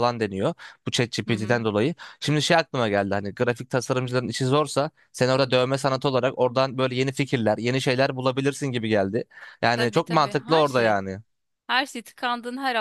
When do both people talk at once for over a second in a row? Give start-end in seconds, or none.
9.7-10.9